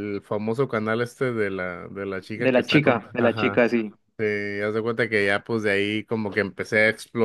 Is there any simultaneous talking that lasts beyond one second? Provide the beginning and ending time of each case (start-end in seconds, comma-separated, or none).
2.4-3.6